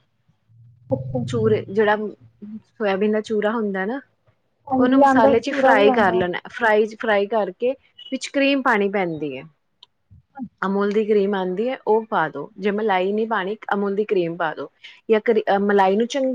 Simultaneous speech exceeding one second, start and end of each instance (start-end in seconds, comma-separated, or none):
4.8-6.2